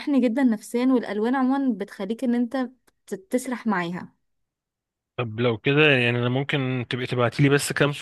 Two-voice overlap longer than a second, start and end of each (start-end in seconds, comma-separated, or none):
none